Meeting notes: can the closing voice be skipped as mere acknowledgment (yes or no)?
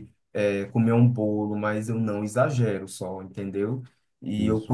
yes